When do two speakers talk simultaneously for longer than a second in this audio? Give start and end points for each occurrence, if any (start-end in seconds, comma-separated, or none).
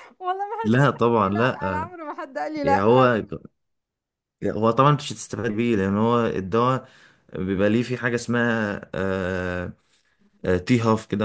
0.6-1.9